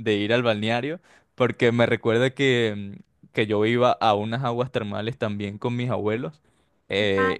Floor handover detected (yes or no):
no